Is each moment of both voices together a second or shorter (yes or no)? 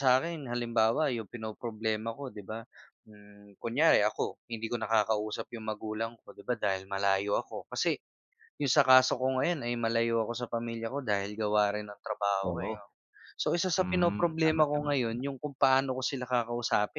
no